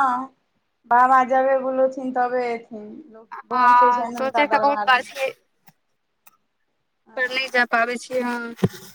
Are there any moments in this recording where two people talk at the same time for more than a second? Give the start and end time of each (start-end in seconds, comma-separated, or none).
3.5-5.1